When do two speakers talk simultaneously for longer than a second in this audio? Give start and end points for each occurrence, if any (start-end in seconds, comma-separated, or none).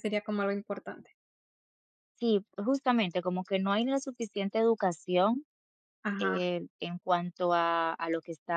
none